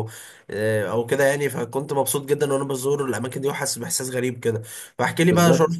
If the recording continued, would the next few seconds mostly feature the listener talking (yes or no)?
no